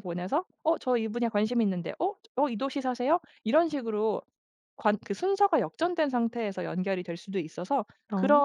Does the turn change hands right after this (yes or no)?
no